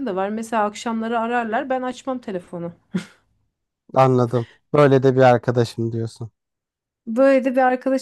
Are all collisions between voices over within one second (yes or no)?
yes